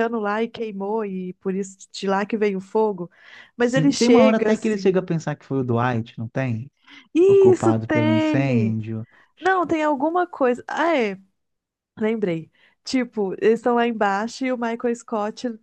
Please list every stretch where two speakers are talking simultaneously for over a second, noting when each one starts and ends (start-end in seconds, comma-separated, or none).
3.6-5.0, 7.3-8.8